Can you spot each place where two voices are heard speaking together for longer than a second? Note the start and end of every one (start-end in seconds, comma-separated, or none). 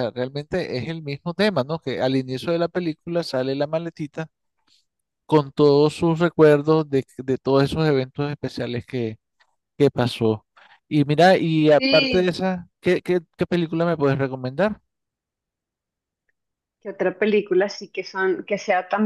none